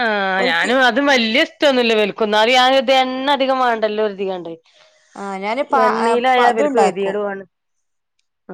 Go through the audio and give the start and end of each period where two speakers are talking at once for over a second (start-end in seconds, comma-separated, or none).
5.8-7.1